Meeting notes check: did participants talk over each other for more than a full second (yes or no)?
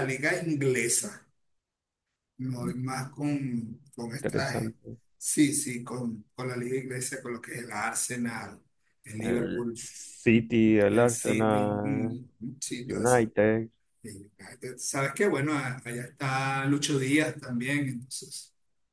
yes